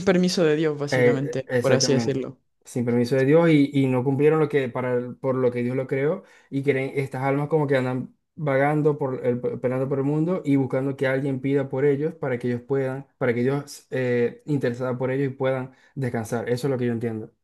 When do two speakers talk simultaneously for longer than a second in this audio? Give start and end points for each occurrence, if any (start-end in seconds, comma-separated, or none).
0.9-2.2